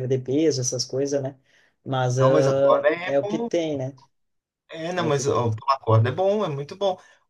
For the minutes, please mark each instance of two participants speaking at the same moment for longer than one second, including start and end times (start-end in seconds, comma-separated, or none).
2.2-3.5